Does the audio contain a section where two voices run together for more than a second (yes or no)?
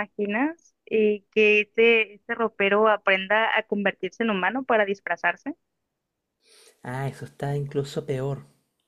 no